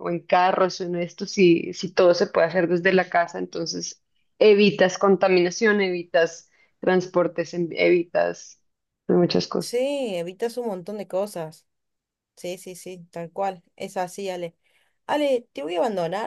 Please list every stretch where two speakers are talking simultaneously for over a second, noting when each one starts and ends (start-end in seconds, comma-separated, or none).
none